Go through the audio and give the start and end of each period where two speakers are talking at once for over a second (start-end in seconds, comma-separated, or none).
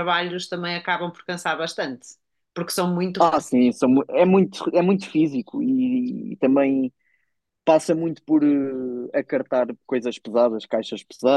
none